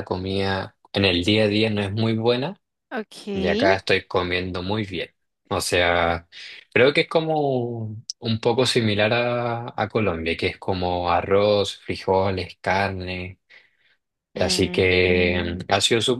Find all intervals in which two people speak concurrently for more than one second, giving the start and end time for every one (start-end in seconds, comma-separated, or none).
14.3-15.6